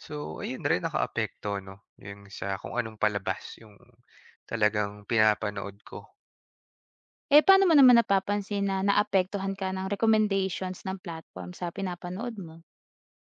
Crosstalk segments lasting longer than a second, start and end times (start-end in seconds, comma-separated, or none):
none